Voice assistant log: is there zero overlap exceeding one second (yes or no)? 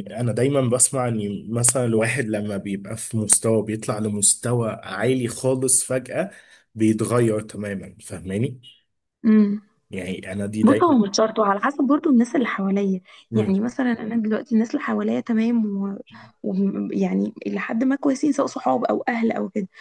yes